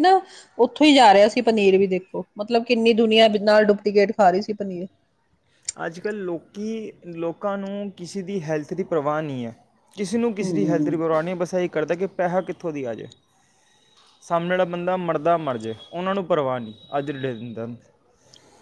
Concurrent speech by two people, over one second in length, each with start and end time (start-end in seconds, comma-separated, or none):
none